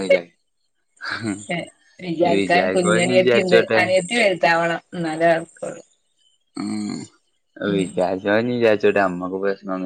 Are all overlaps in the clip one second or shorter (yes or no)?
no